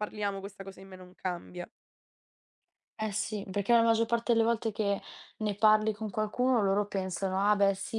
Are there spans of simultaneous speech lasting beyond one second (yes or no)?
no